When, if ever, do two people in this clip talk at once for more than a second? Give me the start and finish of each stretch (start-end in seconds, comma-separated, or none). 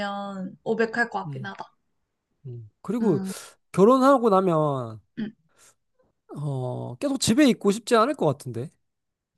none